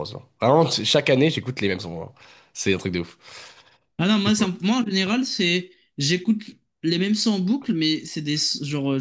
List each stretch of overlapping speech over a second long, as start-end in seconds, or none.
none